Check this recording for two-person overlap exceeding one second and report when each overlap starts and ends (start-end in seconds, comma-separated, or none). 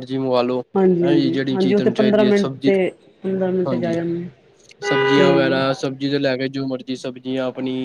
1.0-2.7